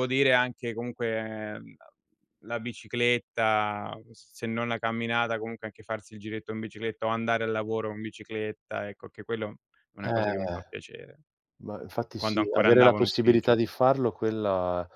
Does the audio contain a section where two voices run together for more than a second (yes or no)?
yes